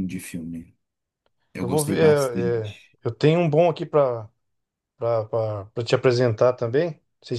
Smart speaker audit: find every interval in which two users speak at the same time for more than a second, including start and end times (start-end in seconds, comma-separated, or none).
1.6-2.9